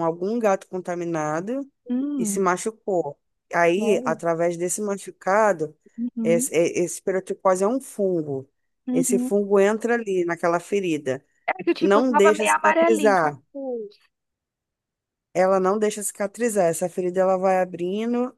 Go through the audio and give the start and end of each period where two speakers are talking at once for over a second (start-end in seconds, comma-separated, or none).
11.8-13.4